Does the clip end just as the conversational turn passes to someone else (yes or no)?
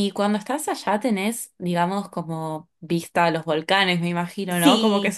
yes